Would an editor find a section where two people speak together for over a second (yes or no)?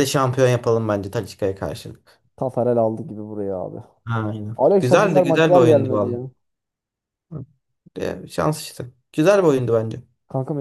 yes